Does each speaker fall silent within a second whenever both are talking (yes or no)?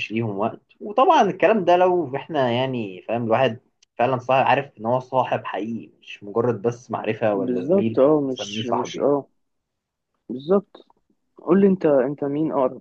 no